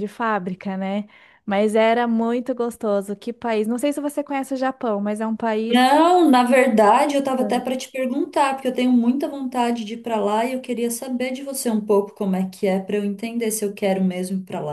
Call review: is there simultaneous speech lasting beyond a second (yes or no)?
no